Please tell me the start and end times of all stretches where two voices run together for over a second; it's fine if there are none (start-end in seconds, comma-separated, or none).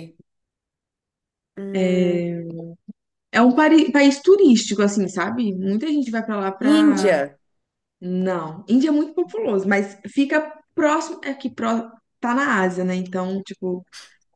none